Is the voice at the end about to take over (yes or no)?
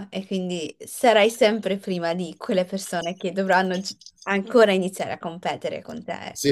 yes